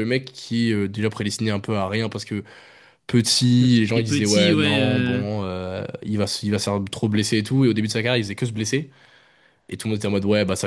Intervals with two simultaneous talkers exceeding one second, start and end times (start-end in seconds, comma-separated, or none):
3.6-5.2